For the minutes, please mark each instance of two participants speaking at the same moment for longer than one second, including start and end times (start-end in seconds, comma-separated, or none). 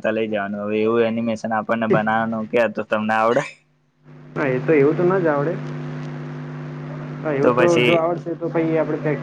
none